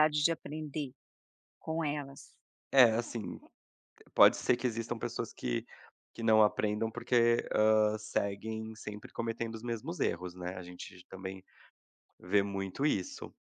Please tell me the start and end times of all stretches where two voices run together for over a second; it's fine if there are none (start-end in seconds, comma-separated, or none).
none